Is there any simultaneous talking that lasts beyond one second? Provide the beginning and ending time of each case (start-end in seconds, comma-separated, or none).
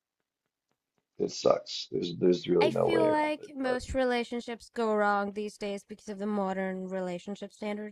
2.6-3.8